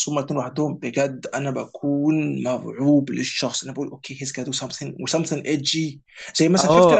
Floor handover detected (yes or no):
no